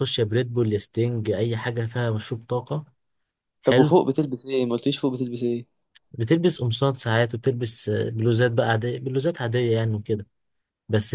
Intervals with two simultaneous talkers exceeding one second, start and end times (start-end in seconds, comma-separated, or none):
none